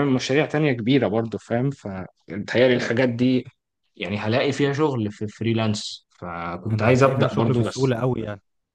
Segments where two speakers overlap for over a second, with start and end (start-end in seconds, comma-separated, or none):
6.7-8.0